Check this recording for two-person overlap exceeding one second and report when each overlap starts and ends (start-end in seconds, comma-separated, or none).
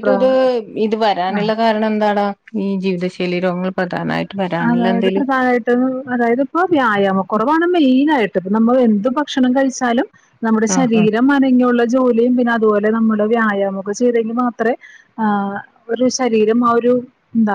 none